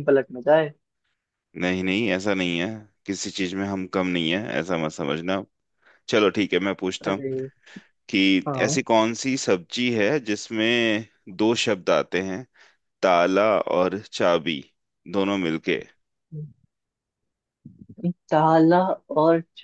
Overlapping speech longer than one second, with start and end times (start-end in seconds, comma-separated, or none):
none